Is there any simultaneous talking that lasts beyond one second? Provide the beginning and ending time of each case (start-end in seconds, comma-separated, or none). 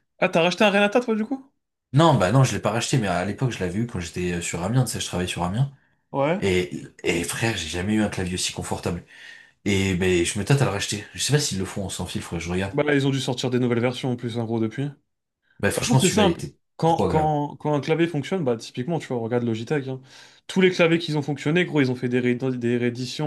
15.8-17.4